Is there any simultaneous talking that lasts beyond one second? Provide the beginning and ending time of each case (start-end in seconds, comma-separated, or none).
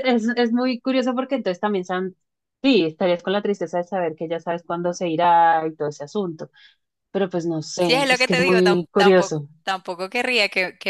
7.8-9.5